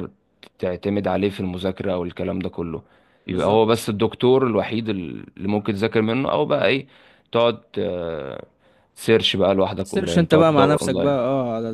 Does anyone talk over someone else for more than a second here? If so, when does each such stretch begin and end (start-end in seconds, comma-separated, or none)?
9.8-11.2